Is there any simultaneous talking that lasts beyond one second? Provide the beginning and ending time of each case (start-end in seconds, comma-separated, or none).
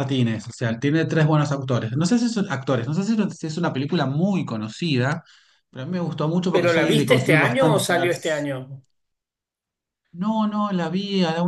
6.5-8.1